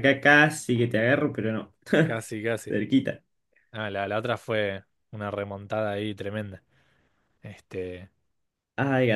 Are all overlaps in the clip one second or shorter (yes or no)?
yes